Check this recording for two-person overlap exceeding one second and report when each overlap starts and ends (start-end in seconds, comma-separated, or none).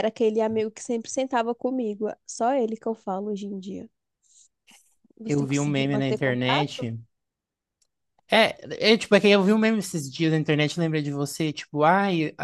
5.2-6.9